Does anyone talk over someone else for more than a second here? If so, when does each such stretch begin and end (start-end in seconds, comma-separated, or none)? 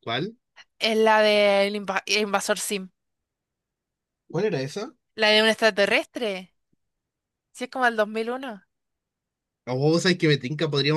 none